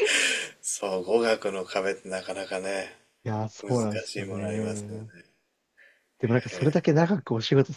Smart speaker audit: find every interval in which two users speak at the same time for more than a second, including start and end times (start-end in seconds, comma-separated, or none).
3.6-5.0